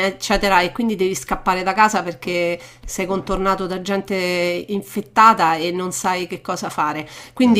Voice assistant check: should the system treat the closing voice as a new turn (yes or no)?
no